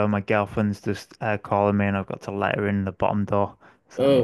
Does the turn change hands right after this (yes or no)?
yes